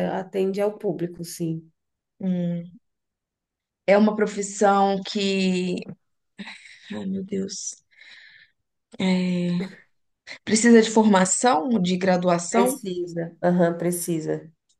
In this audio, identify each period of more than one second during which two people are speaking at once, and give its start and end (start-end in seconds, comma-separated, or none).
none